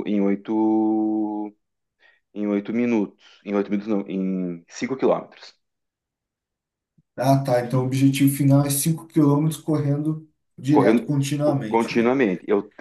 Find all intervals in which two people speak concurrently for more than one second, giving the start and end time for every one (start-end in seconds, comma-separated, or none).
10.7-12.1